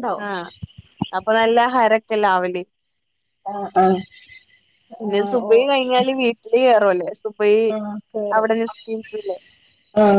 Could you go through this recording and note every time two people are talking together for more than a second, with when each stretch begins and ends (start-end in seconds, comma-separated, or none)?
none